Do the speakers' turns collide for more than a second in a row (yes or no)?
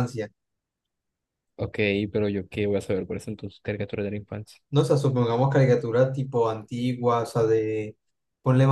no